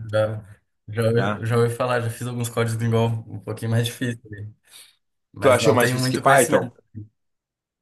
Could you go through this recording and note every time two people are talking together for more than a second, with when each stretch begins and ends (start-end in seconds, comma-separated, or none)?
5.4-6.7